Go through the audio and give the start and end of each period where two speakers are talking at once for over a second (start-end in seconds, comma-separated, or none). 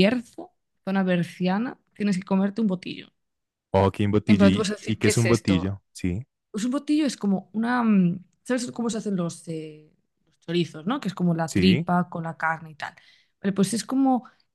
4.3-5.8